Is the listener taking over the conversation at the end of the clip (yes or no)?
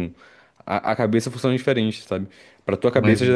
no